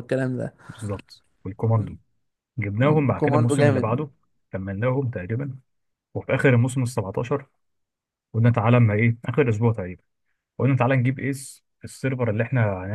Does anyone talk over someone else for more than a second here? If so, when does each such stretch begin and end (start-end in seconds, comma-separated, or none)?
2.8-4.1